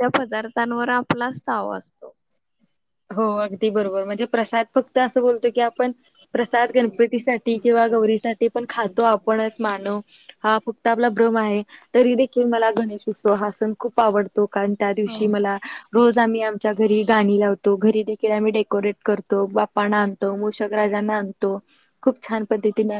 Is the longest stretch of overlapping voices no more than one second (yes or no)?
yes